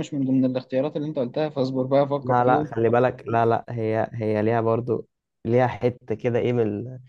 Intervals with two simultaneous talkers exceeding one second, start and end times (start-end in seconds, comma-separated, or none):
none